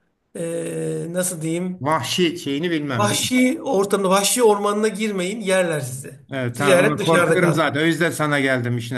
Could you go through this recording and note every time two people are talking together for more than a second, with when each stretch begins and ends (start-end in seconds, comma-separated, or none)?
6.3-7.8